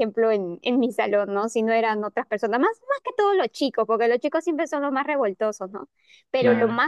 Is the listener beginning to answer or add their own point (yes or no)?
no